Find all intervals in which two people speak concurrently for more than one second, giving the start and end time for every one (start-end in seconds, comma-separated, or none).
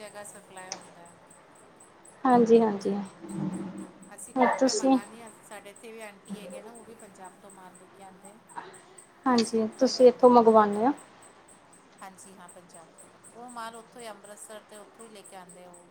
9.4-10.9